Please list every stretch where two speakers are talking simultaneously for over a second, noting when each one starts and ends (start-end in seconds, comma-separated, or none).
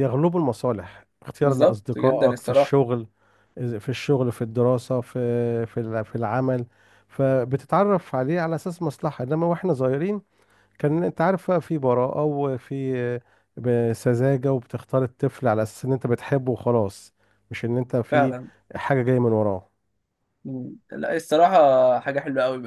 1.4-2.7